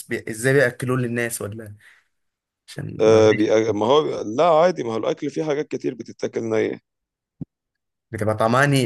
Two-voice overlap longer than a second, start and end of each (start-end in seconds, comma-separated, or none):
none